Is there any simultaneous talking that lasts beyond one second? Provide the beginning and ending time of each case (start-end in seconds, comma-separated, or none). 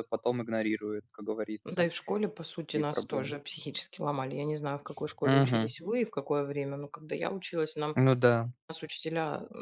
none